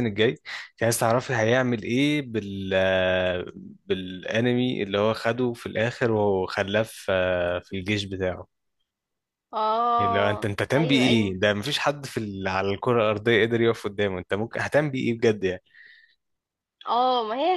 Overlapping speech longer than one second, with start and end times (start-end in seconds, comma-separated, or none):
10.0-11.3